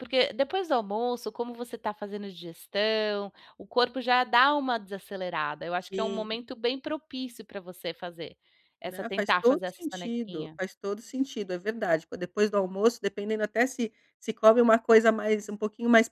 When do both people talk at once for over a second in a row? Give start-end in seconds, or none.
8.8-10.6